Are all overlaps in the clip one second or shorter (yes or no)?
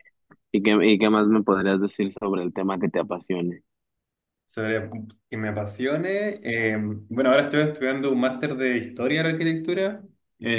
yes